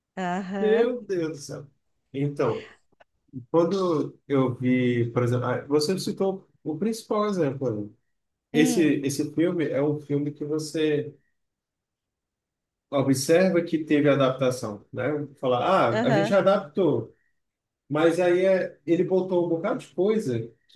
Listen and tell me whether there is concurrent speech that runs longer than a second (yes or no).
no